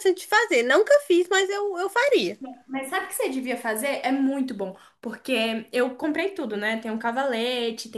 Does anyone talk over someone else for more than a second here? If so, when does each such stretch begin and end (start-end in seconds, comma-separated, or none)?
none